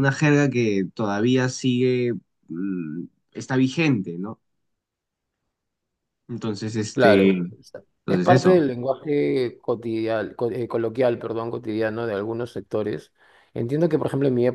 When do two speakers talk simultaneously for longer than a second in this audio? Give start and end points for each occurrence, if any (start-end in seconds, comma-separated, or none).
6.9-8.7